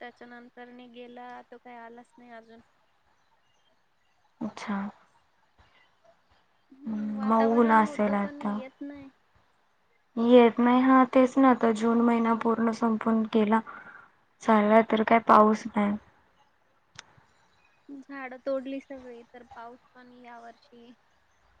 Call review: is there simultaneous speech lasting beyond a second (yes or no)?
yes